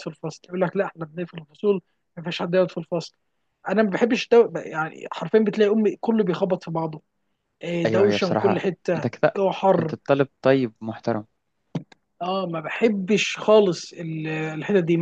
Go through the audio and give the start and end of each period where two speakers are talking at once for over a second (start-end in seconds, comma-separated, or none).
7.8-9.9